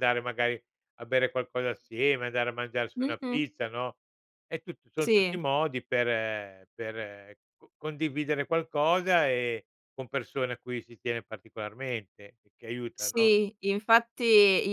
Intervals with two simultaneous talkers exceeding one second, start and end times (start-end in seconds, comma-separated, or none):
none